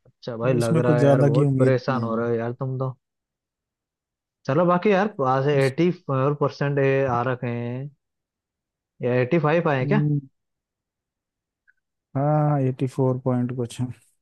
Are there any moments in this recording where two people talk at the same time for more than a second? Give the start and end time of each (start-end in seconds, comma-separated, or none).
0.6-2.3